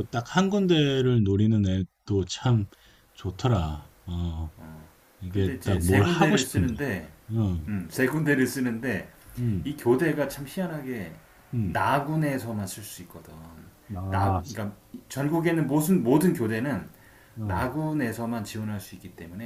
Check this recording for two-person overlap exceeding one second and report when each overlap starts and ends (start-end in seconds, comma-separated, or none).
5.3-6.8